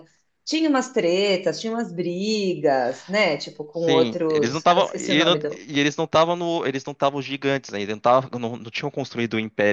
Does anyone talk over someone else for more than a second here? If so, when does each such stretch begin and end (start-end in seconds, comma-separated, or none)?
3.7-5.6